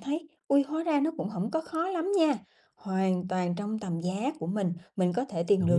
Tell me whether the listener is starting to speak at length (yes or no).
no